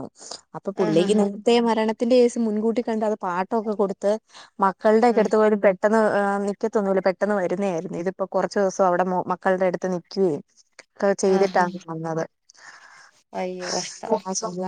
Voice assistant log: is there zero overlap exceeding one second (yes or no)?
yes